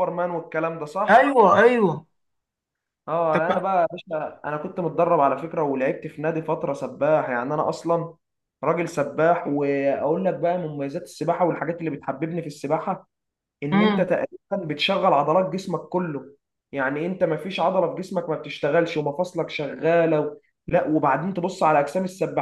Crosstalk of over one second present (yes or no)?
no